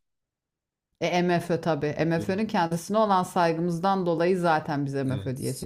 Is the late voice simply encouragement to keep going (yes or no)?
no